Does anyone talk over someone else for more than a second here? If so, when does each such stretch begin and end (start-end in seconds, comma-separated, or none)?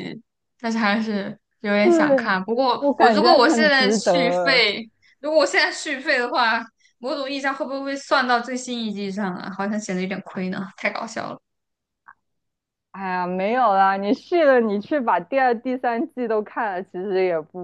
2.8-4.6